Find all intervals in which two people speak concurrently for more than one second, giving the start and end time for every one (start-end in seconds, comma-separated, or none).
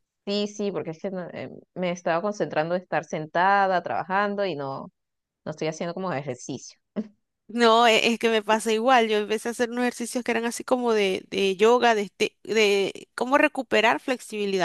none